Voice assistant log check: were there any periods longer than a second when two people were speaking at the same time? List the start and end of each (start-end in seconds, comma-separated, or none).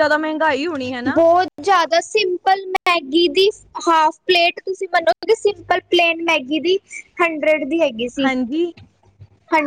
none